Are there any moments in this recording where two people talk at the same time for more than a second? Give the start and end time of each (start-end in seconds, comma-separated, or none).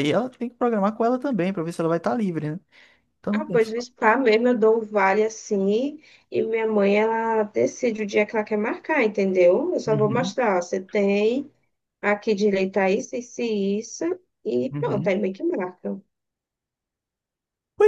none